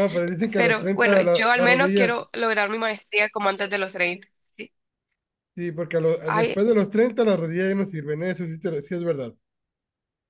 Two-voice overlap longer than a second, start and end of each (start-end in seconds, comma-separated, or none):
0.6-2.1